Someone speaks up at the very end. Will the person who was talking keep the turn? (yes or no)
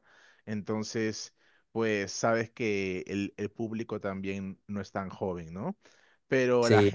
yes